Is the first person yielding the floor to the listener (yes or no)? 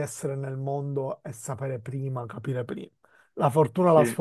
no